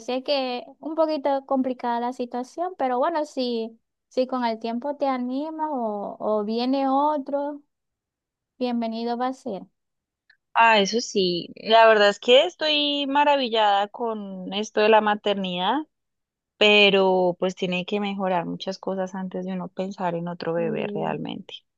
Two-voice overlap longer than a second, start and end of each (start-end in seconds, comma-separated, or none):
none